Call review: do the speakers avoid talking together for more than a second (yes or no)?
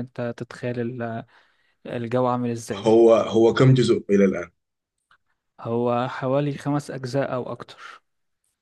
yes